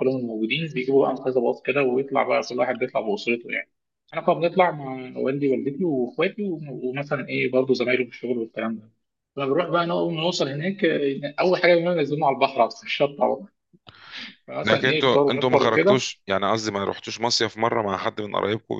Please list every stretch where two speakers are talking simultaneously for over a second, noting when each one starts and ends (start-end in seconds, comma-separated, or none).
14.6-16.0